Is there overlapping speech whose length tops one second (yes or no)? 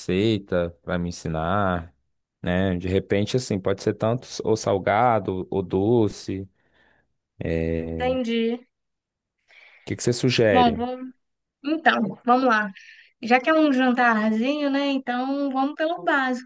no